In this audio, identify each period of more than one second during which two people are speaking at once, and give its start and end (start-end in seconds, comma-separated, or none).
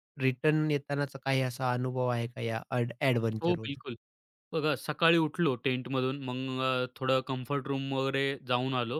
none